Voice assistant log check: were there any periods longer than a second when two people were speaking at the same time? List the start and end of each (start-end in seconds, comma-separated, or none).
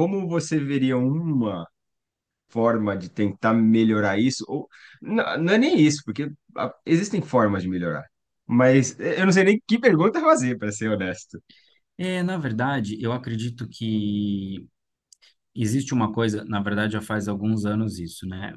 none